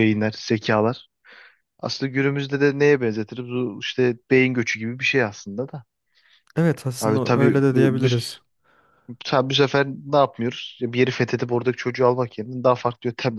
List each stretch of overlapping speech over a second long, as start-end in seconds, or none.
7.0-8.4